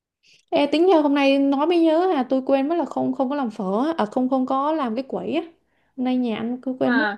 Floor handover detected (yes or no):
no